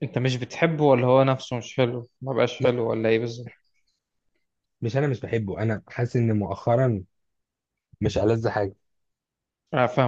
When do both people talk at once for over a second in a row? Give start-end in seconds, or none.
none